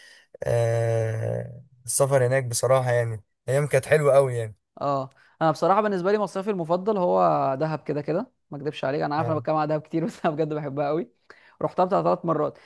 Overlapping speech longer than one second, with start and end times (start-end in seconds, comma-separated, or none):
none